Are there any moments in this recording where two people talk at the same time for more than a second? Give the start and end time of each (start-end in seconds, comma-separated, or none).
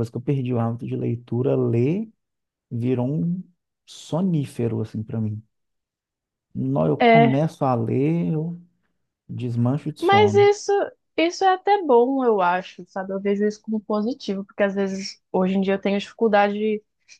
none